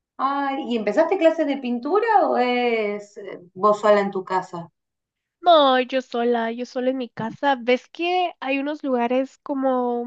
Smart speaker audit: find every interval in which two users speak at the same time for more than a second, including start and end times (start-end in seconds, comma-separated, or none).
none